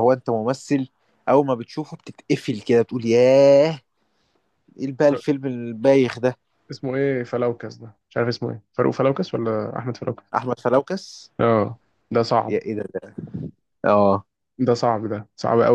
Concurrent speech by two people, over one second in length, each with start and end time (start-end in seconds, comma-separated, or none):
none